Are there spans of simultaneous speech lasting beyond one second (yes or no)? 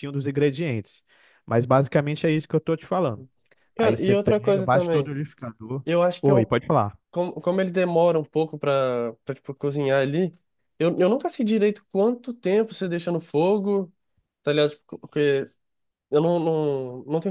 yes